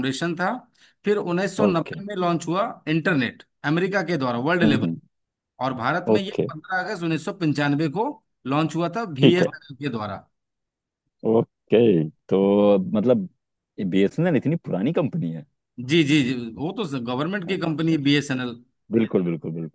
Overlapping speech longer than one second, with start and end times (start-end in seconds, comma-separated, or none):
none